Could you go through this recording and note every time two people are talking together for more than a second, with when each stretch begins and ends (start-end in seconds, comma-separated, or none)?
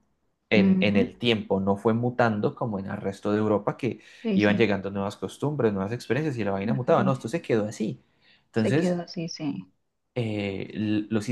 none